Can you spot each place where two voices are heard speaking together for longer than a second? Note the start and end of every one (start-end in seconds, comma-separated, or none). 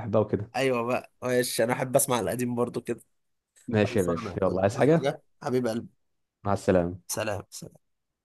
3.8-5.1